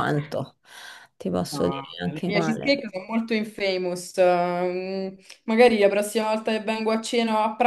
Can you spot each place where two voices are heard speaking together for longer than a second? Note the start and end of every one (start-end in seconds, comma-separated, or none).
1.5-2.9